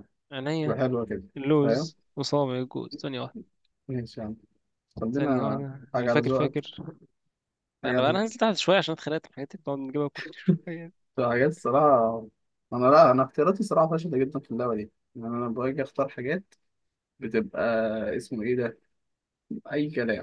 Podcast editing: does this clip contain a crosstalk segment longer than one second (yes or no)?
yes